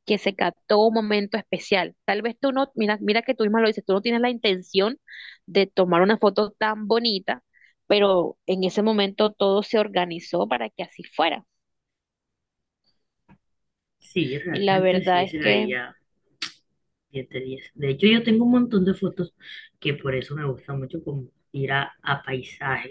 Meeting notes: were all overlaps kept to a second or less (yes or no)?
no